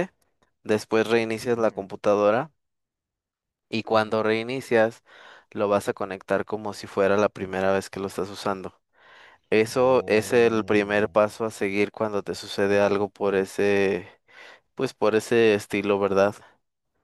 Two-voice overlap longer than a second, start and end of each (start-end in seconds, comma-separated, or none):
9.7-11.2